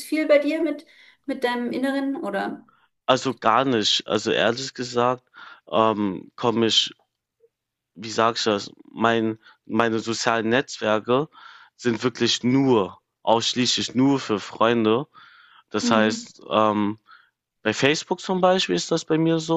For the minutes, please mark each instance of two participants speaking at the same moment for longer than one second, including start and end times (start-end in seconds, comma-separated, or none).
none